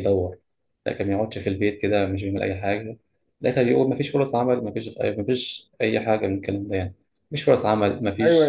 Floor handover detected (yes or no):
no